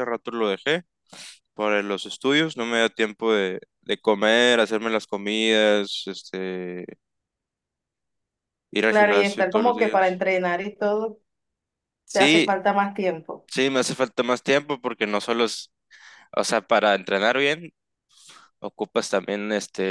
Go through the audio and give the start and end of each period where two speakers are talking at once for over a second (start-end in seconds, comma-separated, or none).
8.9-10.2